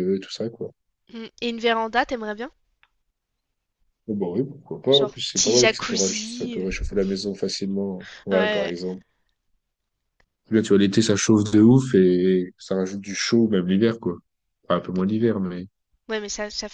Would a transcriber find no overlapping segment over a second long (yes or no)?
no